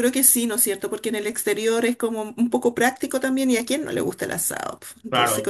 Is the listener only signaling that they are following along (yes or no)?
no